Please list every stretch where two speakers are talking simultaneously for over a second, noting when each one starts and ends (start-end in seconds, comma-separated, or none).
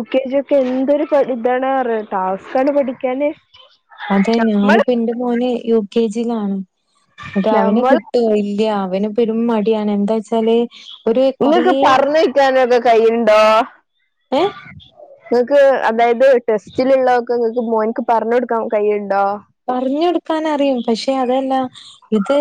none